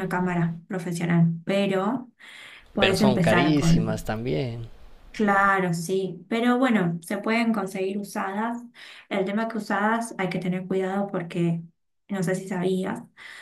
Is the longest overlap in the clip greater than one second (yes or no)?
yes